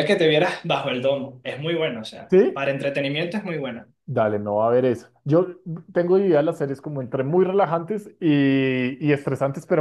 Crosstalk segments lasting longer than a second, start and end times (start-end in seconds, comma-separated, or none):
none